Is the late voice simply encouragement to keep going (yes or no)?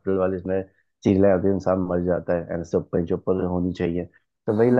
yes